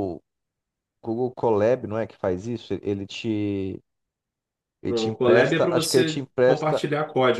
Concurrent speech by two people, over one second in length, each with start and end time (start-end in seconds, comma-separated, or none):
4.9-6.9